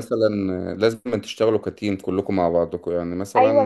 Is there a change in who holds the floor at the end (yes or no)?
yes